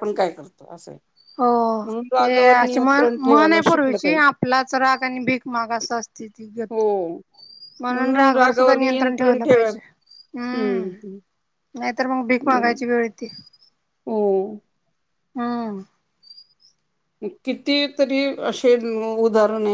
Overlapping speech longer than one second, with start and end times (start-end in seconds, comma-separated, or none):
2.2-4.3